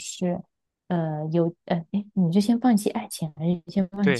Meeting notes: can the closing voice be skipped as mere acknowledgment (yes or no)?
no